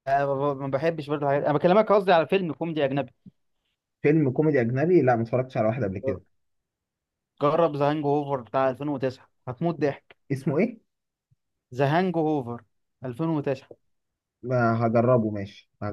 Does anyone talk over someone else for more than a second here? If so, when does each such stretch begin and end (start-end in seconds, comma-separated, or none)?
none